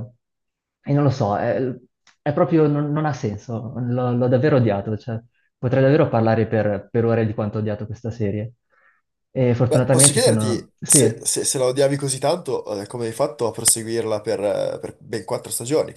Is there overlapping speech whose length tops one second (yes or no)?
yes